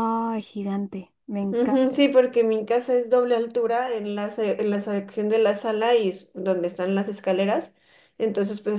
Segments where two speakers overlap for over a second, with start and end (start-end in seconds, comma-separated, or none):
none